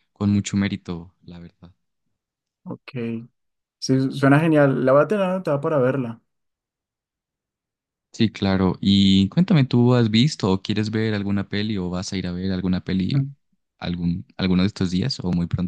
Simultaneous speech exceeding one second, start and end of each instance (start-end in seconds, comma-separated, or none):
none